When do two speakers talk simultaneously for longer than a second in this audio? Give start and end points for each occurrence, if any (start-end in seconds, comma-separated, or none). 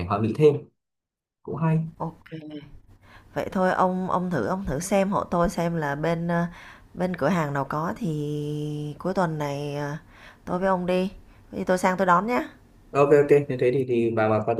none